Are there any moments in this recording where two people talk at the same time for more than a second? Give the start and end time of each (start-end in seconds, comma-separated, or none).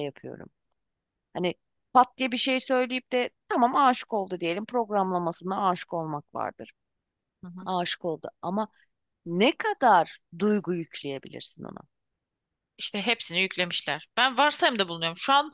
none